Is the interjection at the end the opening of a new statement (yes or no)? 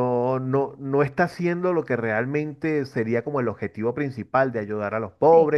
yes